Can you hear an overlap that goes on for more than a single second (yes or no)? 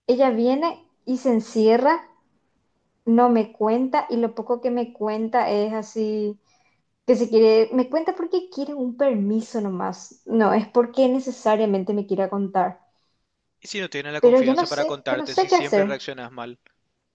yes